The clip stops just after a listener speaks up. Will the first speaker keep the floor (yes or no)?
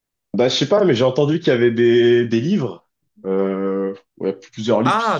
no